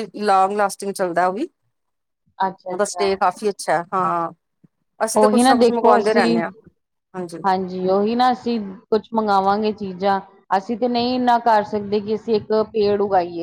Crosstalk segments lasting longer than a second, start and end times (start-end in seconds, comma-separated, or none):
5.2-6.4